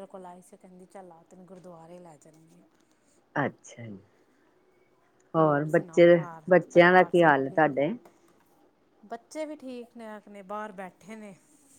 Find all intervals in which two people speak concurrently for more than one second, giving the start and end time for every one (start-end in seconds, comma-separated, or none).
5.4-7.8